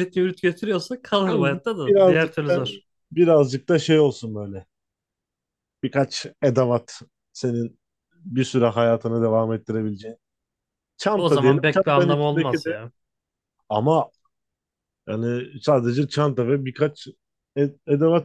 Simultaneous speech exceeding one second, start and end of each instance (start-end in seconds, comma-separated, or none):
1.2-2.6, 11.2-12.8